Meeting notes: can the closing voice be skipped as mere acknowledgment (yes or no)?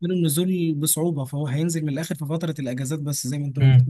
no